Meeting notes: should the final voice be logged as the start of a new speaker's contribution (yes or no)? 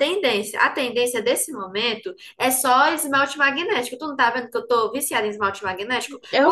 no